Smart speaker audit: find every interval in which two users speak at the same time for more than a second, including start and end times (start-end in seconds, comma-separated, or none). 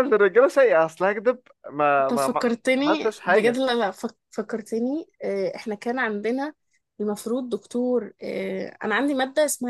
2.0-3.6